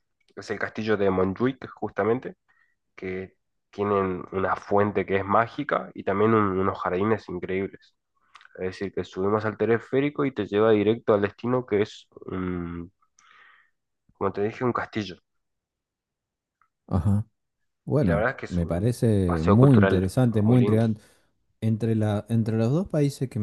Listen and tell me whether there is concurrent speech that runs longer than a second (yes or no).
yes